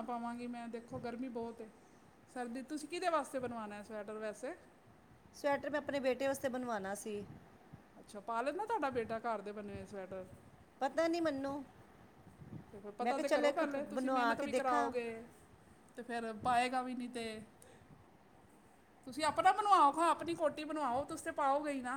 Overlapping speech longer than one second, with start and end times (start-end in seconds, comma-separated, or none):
13.0-14.9